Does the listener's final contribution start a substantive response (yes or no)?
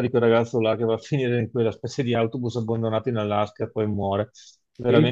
yes